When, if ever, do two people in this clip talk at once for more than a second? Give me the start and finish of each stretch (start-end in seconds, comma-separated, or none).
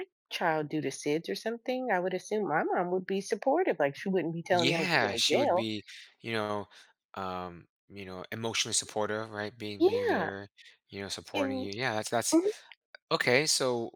4.5-5.7